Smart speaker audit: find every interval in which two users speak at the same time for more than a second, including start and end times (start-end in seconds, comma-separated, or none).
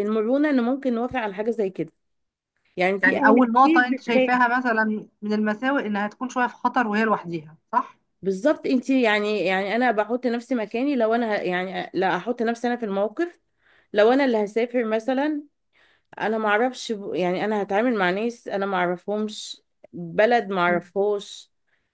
3.0-4.3